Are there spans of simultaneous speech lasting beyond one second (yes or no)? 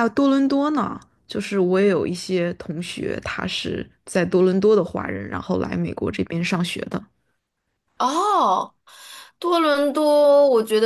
no